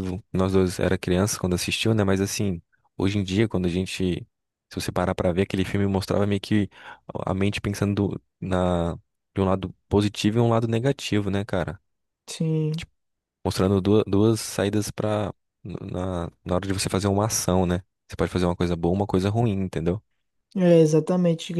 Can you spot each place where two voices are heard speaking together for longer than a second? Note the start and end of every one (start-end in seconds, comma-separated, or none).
none